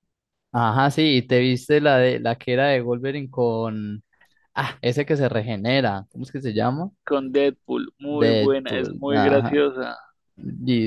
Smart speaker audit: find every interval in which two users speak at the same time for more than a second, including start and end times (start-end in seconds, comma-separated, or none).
8.1-9.6